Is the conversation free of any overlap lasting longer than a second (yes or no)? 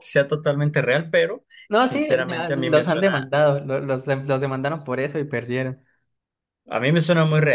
no